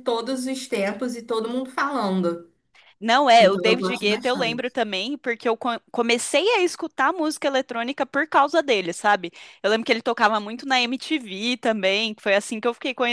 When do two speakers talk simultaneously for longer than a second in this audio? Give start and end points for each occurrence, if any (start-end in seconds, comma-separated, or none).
3.4-4.7